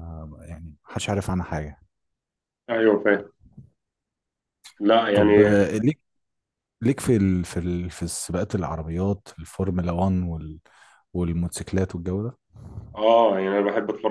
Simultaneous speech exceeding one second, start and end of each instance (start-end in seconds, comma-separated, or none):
none